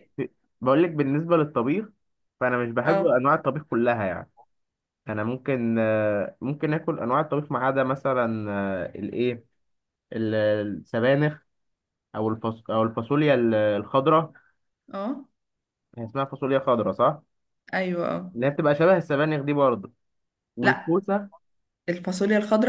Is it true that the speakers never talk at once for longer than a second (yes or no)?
yes